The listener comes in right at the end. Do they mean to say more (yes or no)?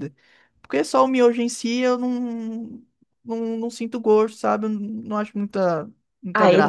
yes